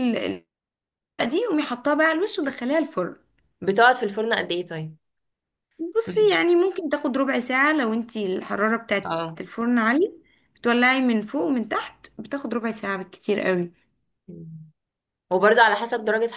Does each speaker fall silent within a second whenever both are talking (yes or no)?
yes